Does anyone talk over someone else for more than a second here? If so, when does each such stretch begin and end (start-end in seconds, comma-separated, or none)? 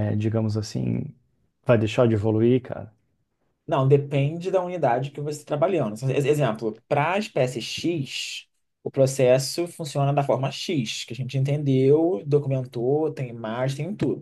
none